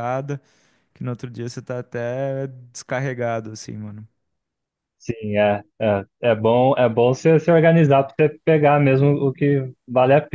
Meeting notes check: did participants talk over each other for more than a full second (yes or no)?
no